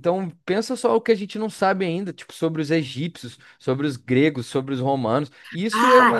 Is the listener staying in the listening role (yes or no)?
yes